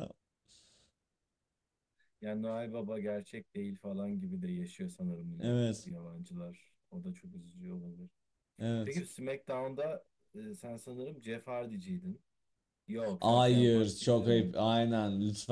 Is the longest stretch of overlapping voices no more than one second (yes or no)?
no